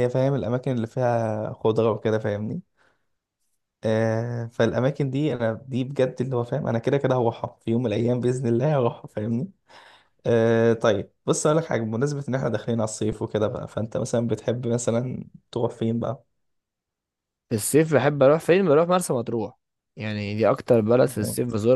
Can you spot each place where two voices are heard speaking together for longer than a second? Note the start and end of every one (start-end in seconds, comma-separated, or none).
none